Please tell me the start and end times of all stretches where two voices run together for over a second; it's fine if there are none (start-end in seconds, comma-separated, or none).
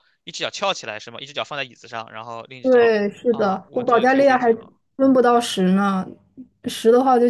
2.6-4.5